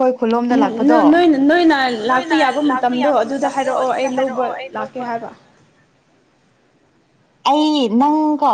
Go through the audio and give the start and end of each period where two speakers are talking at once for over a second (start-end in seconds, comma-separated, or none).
2.1-5.1